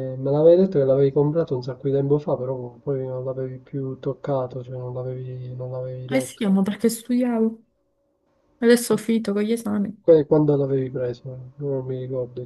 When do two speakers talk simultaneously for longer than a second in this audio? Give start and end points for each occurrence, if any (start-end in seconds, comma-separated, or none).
none